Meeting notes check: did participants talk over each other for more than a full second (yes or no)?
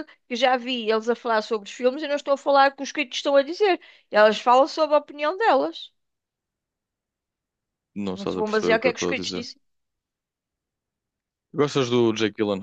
yes